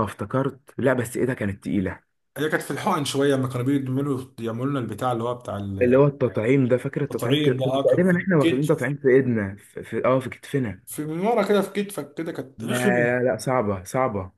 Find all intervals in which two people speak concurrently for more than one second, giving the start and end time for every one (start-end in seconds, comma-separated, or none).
7.1-8.9